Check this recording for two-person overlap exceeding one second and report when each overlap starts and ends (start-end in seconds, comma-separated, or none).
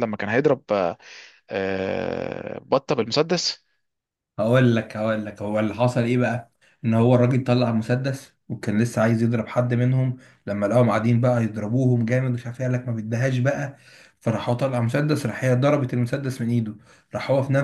none